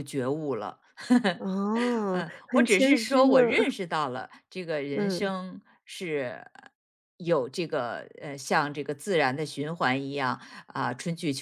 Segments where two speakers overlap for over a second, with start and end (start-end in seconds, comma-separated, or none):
2.1-3.8